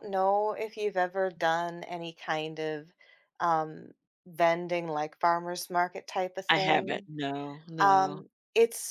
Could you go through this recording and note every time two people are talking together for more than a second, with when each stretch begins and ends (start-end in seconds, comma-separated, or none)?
none